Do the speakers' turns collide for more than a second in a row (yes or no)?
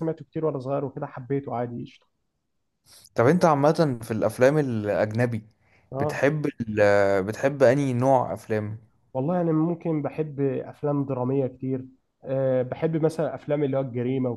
no